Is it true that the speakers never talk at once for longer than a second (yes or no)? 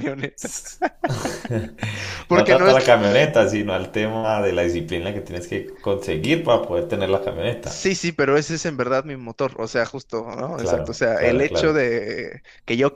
no